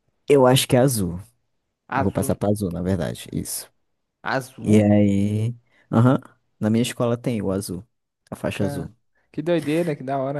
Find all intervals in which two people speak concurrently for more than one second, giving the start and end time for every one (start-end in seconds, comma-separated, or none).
none